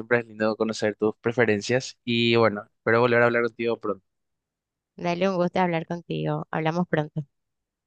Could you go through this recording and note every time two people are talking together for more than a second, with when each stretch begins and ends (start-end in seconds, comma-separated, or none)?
none